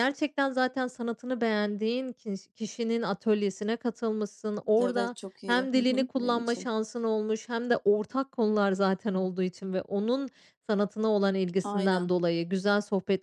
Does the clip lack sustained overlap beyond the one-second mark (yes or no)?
no